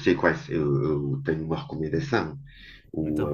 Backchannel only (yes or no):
yes